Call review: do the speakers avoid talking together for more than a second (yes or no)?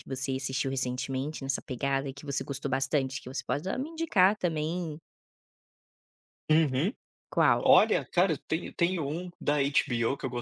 yes